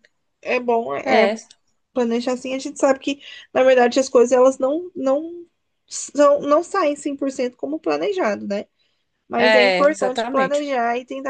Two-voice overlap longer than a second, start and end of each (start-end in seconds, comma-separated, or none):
9.4-10.6